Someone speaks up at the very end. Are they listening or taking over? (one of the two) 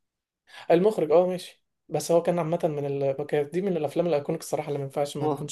taking over